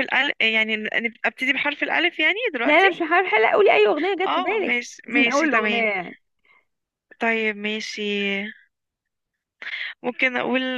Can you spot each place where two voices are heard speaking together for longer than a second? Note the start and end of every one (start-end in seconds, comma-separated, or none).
4.2-5.8